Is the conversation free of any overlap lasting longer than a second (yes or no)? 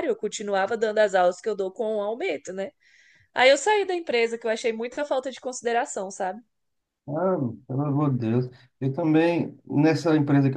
yes